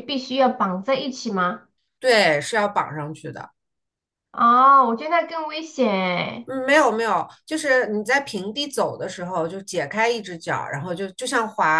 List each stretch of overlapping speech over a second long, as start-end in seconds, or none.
none